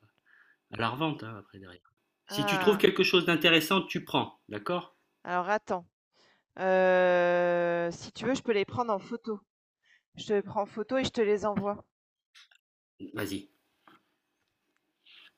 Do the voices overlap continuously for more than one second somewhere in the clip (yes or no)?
no